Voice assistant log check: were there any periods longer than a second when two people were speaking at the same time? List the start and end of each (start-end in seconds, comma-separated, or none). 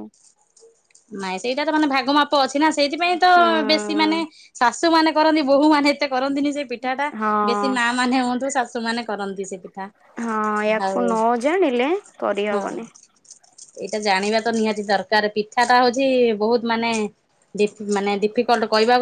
none